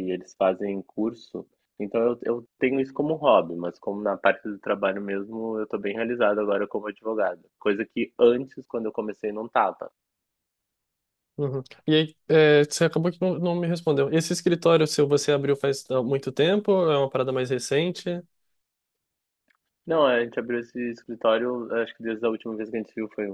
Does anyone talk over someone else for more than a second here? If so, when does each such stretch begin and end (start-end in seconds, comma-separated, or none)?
none